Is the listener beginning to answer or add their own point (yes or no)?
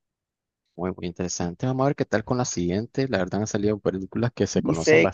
yes